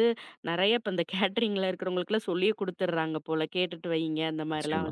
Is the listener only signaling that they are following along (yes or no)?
yes